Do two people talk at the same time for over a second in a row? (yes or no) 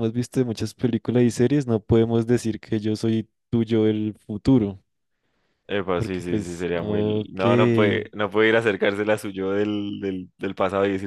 yes